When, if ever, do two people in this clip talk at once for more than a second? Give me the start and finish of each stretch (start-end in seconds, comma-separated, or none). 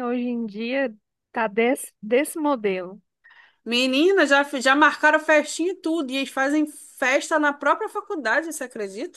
none